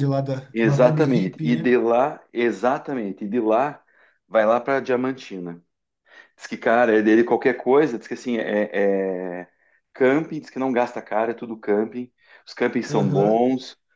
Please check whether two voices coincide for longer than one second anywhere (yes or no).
yes